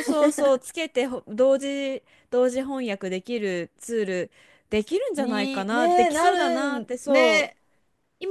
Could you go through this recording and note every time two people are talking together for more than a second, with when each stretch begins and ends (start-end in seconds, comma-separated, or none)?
5.2-7.6